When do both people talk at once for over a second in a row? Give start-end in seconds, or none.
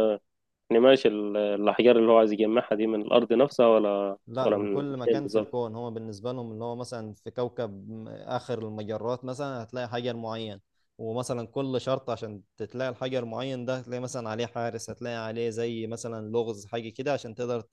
4.3-5.6